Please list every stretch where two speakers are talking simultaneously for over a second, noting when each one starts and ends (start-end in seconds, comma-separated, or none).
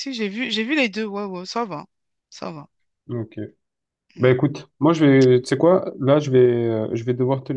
none